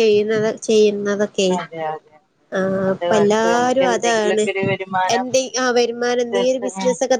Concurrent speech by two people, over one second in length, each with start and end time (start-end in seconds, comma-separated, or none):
2.9-4.4